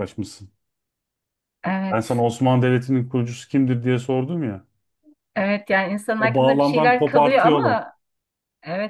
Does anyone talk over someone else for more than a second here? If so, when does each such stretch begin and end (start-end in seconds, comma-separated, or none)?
6.2-7.8